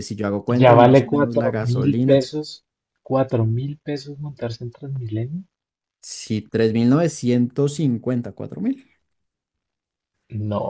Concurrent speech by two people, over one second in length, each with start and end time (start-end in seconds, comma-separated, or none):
0.5-2.3